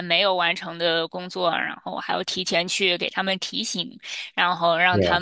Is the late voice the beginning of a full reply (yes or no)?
no